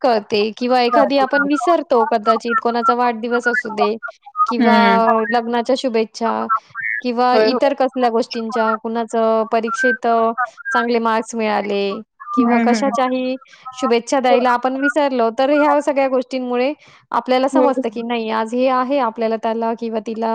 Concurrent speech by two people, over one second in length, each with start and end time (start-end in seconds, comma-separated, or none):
none